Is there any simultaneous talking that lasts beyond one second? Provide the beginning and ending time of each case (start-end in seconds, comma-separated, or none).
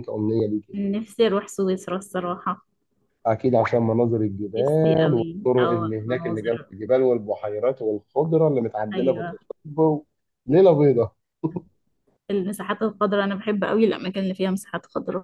4.6-6.7